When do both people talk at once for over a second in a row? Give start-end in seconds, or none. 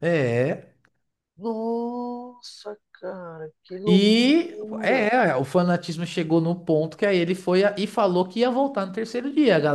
3.9-5.1